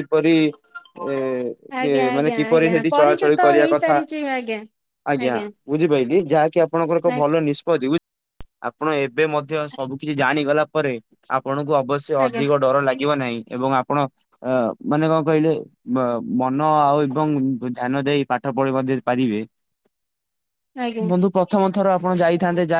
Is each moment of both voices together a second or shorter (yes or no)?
no